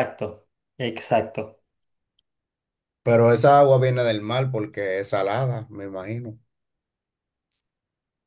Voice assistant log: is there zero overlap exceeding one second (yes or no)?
yes